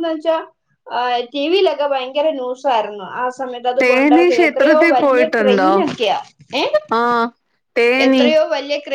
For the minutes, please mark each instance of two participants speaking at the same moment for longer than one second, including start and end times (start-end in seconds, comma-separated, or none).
3.8-5.7